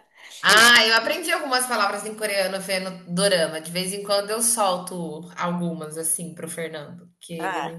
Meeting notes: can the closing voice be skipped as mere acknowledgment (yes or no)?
no